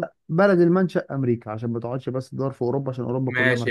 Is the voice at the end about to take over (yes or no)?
yes